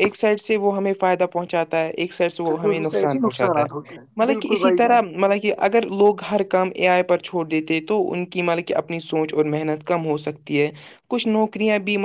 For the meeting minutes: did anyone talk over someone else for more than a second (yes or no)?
yes